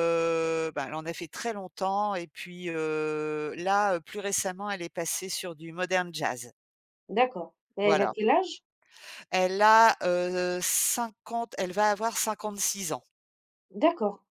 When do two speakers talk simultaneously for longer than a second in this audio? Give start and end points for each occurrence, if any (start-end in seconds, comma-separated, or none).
none